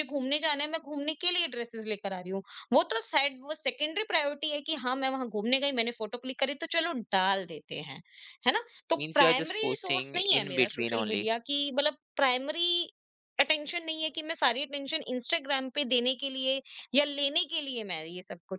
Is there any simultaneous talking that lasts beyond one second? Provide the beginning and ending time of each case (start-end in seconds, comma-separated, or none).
9.0-11.2